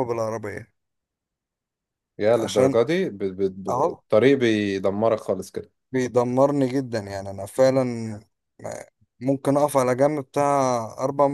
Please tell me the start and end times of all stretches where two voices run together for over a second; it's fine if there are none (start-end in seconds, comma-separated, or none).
none